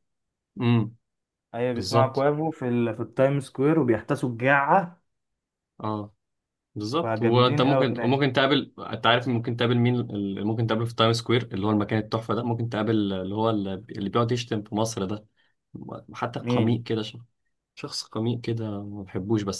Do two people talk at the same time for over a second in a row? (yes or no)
yes